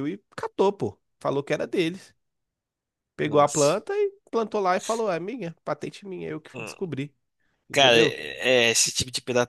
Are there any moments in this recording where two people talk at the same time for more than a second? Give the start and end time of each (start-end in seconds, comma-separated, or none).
none